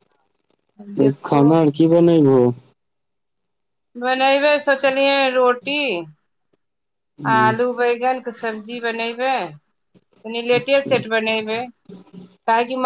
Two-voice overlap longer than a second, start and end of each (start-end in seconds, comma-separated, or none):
none